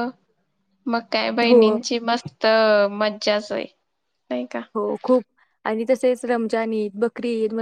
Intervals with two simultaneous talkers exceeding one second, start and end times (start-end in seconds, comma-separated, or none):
none